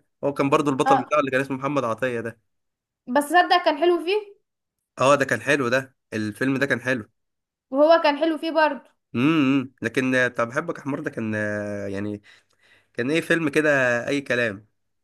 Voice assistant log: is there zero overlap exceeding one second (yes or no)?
yes